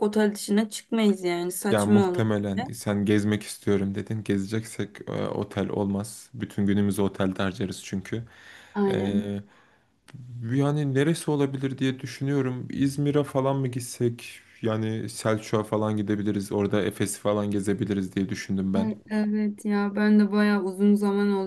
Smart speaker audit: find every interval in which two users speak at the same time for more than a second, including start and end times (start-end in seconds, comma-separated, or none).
none